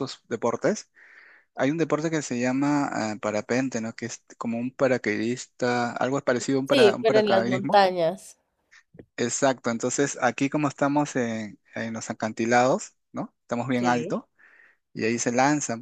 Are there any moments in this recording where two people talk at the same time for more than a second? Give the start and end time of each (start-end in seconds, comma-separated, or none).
6.7-7.9